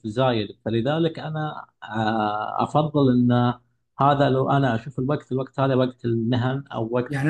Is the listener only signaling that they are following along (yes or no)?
no